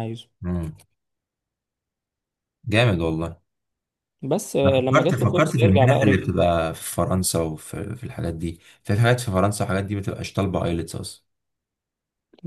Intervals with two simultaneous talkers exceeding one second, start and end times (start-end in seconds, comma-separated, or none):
4.6-6.2